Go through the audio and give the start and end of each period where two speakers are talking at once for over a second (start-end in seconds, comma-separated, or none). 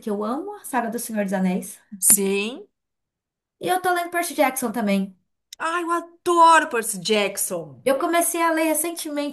none